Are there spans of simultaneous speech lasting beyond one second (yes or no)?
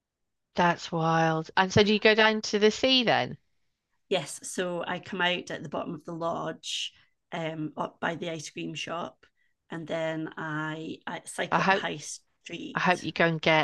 no